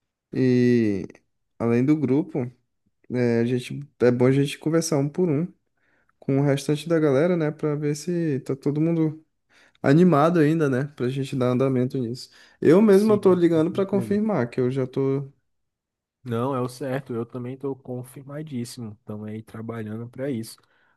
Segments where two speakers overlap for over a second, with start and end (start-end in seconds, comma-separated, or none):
12.9-14.2